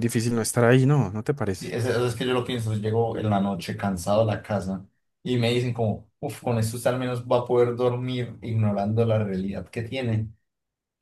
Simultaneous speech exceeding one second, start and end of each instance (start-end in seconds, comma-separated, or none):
none